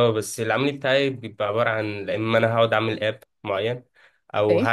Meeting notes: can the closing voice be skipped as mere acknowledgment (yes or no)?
yes